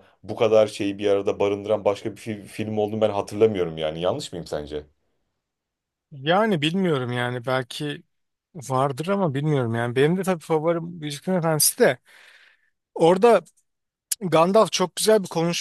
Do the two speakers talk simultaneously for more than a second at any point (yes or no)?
no